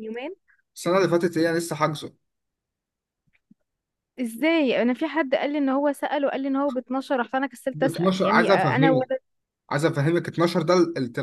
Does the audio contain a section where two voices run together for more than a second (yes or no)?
yes